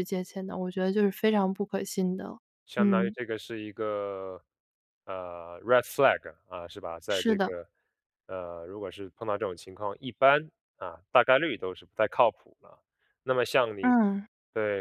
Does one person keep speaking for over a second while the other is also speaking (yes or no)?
no